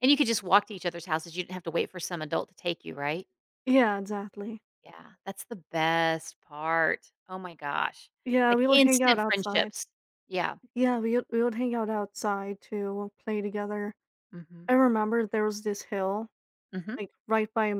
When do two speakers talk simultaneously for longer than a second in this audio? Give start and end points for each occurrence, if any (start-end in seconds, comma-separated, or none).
8.5-9.7